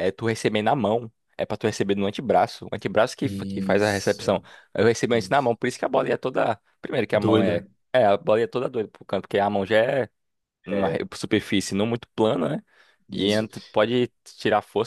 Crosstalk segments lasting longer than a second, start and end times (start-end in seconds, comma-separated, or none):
3.2-4.5